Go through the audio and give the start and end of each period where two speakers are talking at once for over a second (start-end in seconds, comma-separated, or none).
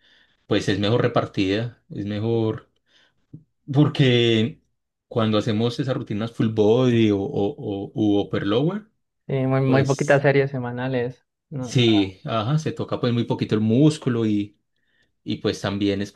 none